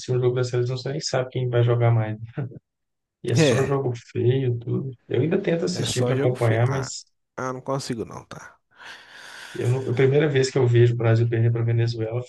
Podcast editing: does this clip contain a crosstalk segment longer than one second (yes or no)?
yes